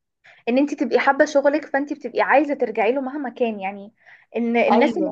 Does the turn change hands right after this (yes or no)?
no